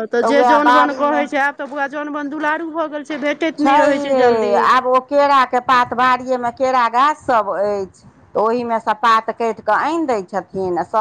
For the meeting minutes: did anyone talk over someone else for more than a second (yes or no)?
no